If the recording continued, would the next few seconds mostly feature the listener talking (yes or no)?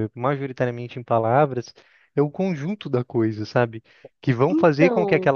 no